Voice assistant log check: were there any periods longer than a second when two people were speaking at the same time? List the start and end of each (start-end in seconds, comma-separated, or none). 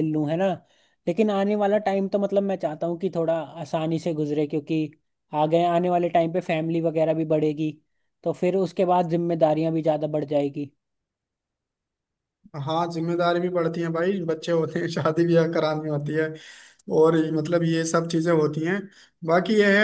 none